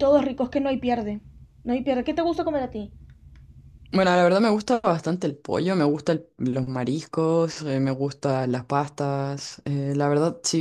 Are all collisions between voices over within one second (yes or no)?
yes